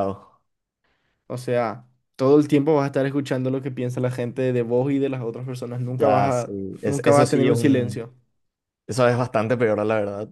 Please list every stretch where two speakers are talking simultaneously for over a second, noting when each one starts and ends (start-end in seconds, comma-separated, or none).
5.8-8.1